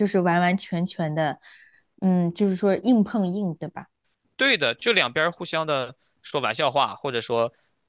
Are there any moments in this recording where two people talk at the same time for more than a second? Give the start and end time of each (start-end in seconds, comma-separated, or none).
none